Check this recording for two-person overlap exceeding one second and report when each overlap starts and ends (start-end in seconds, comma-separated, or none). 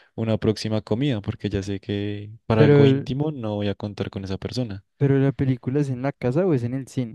none